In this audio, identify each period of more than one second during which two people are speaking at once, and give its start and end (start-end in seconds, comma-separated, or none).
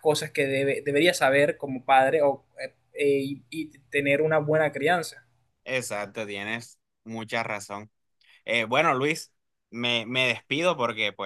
none